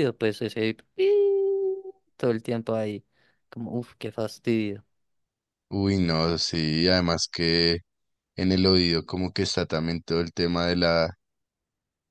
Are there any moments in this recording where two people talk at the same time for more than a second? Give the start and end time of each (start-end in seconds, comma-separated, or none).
none